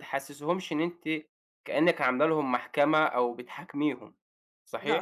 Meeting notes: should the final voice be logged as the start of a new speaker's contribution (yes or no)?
yes